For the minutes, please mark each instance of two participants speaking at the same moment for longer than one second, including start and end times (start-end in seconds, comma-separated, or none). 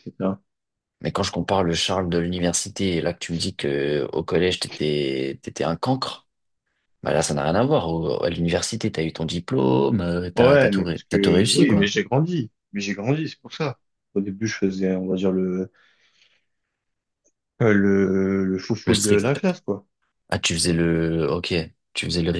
10.3-11.9